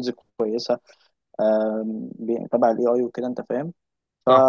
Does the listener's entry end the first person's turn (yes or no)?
no